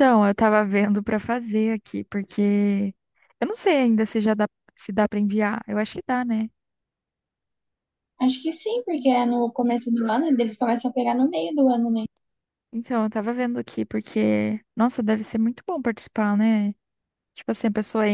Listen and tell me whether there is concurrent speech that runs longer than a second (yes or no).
no